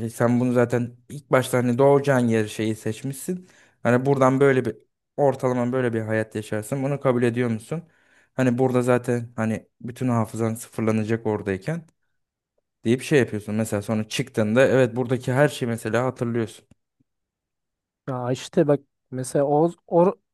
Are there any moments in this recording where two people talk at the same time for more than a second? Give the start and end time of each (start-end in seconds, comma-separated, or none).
none